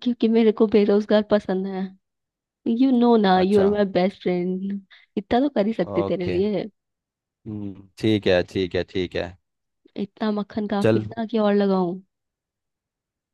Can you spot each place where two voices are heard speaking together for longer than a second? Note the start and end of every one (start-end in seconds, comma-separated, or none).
none